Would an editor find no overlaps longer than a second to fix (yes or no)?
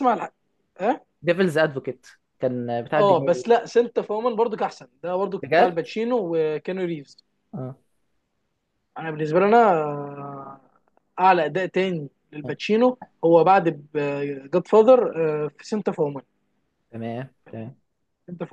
yes